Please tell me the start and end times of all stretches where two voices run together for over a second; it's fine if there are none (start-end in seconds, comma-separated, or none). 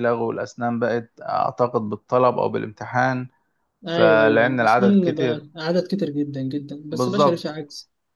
3.9-5.4